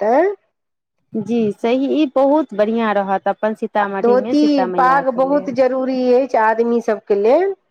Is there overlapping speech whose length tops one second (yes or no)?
yes